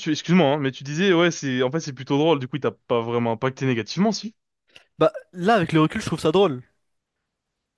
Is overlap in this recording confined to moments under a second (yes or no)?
yes